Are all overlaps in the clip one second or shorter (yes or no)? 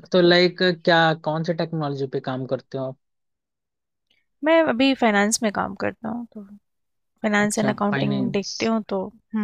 no